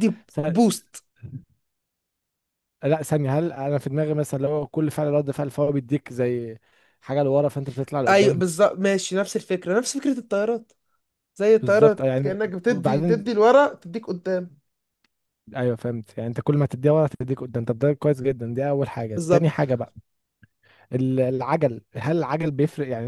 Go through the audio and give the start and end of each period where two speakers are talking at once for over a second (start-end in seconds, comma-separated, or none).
11.6-13.4